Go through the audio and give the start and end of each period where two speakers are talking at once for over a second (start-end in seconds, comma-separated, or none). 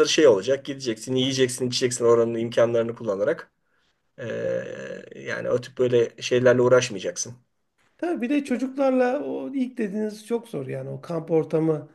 none